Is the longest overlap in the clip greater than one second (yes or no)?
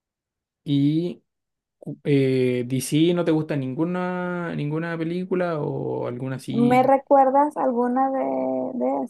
no